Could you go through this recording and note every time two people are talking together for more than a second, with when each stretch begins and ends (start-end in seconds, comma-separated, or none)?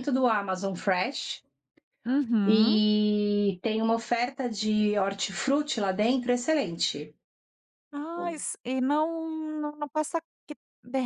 none